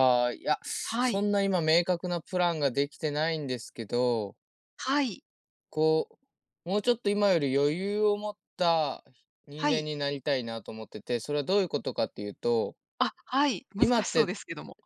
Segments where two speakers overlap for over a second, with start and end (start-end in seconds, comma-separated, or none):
none